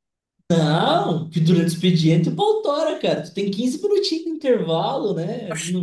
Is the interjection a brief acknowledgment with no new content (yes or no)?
no